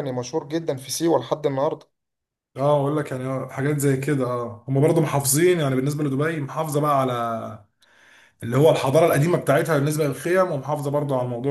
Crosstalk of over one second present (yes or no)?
no